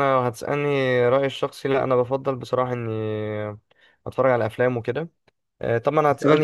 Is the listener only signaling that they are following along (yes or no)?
no